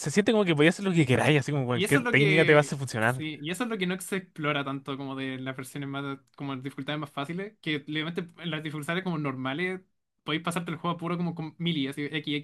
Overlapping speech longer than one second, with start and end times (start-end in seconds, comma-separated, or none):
1.7-3.2